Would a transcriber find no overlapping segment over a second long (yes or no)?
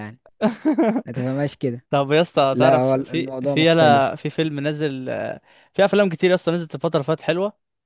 no